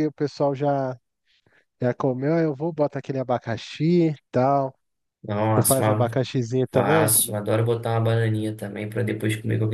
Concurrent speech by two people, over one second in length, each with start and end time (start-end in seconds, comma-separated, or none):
none